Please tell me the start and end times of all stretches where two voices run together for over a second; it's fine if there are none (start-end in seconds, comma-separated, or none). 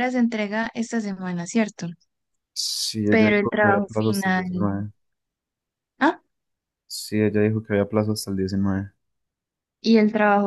3.1-4.4